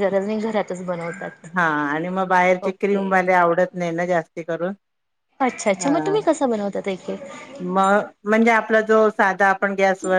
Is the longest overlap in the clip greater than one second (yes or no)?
no